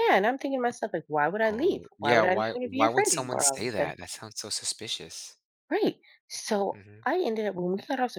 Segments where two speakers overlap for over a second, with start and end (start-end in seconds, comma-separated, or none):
1.5-3.9